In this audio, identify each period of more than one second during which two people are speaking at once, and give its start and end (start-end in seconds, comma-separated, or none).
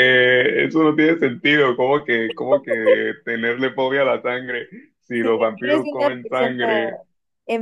5.1-6.5